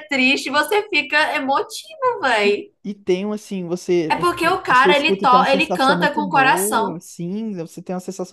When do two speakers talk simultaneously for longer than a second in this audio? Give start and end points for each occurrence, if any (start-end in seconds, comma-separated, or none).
4.1-7.0